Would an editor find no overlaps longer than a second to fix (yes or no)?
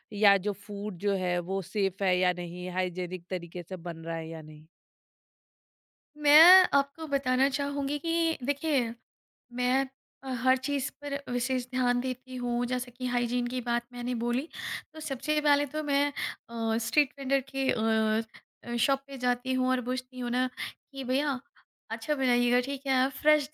yes